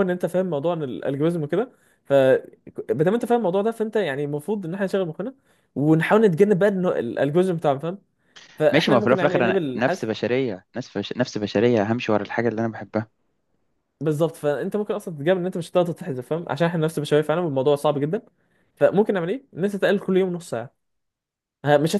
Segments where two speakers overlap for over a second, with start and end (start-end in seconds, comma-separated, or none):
8.7-10.1